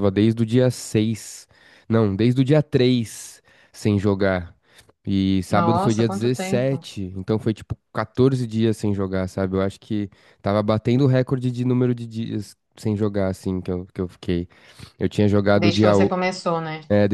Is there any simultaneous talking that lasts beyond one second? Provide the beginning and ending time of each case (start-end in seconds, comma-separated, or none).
5.5-6.8